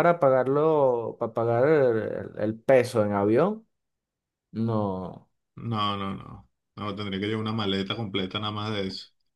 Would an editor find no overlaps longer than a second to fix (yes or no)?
yes